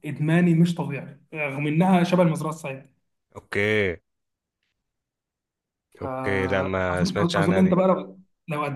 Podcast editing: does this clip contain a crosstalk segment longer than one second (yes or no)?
yes